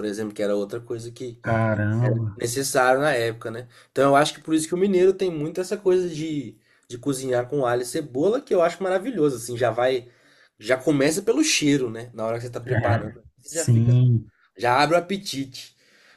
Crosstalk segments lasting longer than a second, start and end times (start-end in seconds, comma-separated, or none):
12.7-14.0